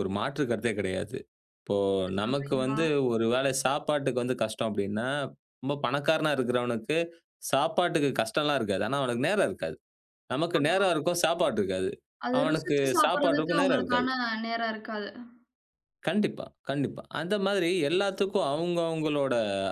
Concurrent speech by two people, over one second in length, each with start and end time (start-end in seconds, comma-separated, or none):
12.4-14.1